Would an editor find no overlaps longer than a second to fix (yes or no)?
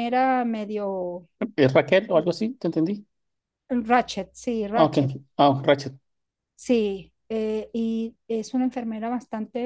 yes